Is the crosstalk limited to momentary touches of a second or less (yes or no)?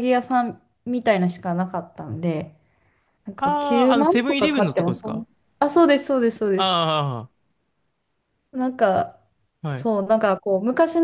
no